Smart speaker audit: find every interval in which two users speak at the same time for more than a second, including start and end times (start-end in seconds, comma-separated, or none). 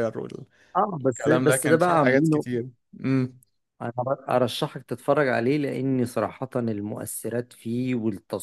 1.0-2.5